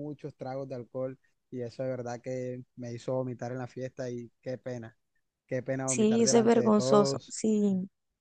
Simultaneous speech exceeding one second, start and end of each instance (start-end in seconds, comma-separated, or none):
5.9-7.4